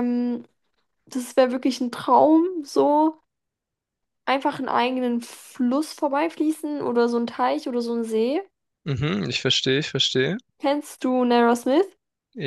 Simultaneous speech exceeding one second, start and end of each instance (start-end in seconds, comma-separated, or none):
none